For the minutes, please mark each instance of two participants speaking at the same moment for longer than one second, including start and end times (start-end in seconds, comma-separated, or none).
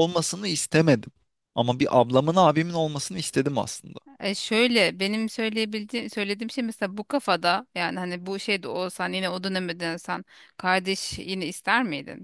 none